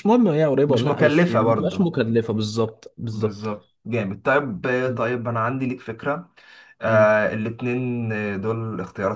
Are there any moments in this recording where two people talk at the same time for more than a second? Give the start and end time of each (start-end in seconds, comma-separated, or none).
0.7-1.9